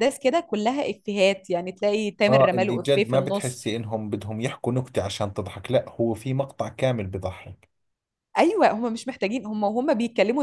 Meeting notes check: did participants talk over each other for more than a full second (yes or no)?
yes